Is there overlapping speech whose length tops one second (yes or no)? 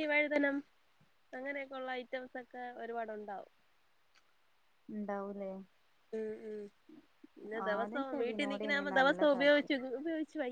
yes